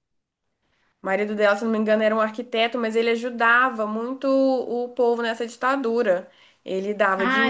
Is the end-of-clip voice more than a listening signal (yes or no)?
yes